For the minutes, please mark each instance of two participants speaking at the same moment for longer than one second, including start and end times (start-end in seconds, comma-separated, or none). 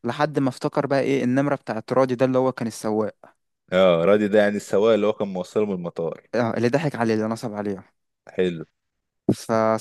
none